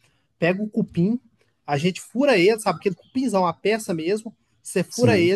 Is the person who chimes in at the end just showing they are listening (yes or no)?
yes